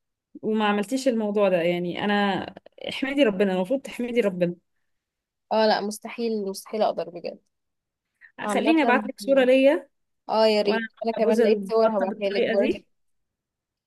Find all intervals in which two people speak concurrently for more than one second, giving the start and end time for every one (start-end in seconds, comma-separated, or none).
10.6-12.8